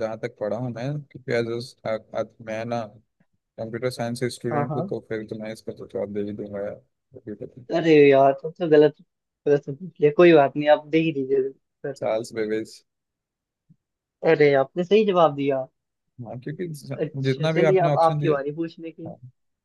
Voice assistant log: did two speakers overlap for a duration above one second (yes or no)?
yes